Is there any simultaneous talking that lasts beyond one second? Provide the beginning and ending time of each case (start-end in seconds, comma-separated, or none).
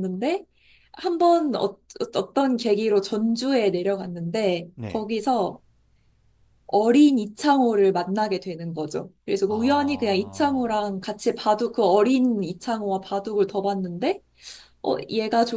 9.4-10.7